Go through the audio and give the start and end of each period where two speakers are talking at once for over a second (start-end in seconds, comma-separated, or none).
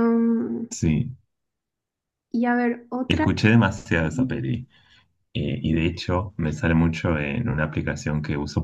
none